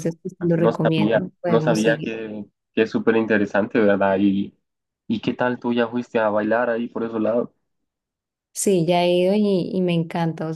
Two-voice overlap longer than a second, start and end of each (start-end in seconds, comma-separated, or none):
0.5-2.1